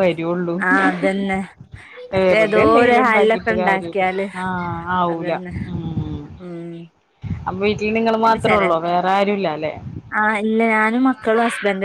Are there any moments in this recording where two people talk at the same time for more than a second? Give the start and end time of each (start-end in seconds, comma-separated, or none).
2.1-4.0